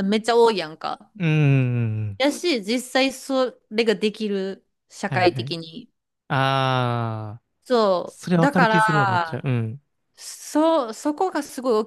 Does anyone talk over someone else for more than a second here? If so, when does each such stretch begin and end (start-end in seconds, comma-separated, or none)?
8.1-9.4